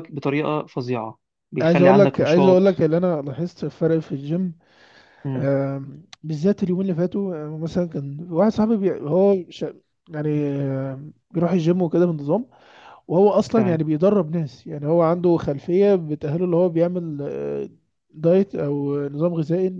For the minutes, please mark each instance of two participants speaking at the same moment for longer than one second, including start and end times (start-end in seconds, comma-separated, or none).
1.6-2.8